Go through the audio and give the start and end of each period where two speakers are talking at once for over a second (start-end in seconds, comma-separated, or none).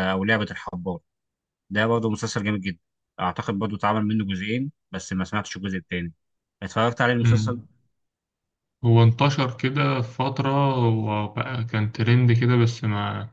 none